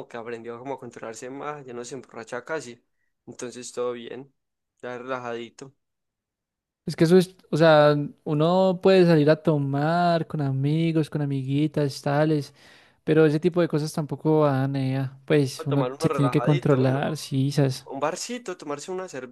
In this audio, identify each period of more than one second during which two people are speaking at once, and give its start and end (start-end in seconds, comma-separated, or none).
15.6-17.0